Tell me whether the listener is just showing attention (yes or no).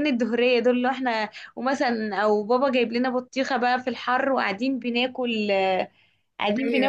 yes